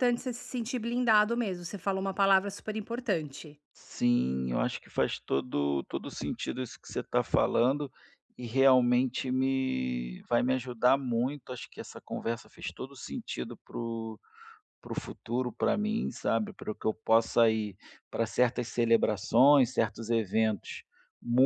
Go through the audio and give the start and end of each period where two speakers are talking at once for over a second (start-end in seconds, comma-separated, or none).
none